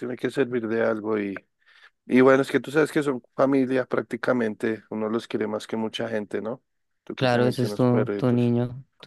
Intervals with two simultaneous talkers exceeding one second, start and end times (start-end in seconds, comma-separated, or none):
7.2-8.5